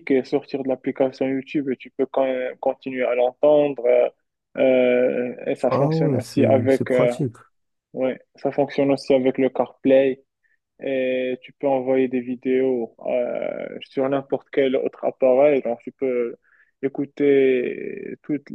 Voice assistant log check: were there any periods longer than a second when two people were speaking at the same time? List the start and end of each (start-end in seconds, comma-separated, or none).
5.7-7.1